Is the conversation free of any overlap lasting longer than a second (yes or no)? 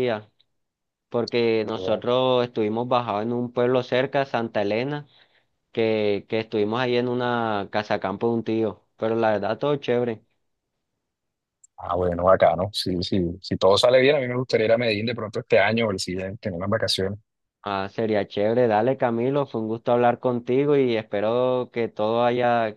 yes